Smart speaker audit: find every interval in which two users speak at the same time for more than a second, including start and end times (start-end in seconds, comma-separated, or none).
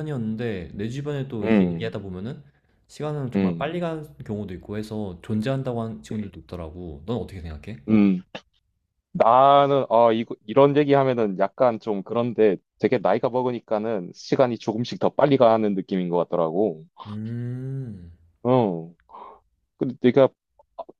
none